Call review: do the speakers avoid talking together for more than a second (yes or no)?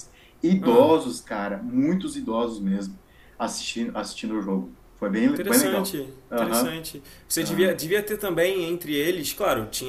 no